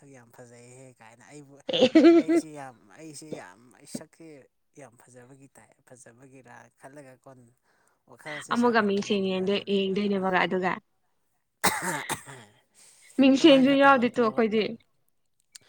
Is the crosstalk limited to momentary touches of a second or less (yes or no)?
no